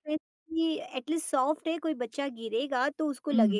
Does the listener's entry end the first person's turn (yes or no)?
yes